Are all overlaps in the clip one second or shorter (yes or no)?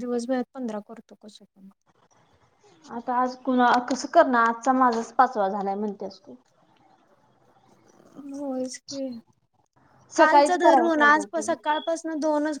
no